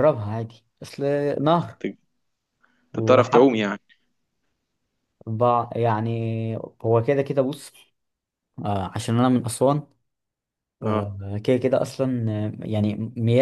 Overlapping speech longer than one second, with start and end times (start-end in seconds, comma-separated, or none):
none